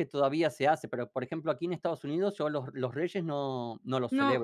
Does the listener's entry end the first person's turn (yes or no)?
yes